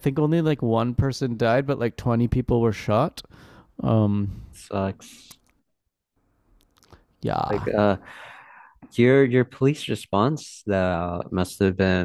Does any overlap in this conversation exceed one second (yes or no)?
no